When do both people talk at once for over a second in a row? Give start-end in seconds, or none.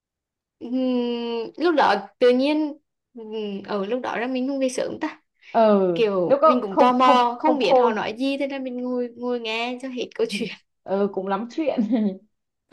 6.2-8.0